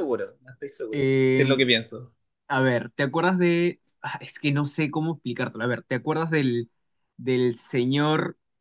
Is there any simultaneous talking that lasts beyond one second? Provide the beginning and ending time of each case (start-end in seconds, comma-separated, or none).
none